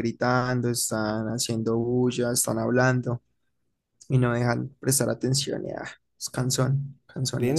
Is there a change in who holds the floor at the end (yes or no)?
yes